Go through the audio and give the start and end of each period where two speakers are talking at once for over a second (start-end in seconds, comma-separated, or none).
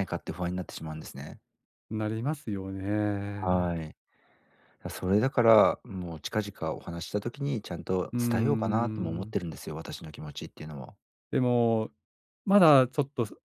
8.1-9.3